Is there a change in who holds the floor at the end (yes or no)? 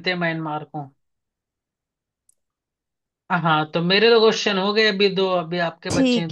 yes